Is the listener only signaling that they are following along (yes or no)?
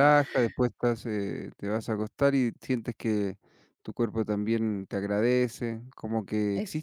yes